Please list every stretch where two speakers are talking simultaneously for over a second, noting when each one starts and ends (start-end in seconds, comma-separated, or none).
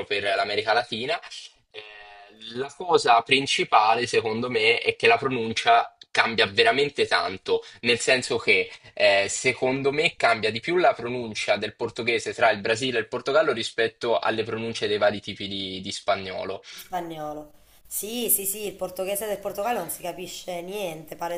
none